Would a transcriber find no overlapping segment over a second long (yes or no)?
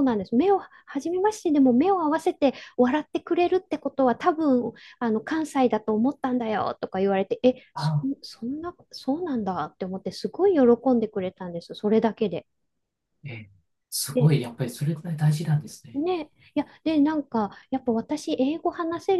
yes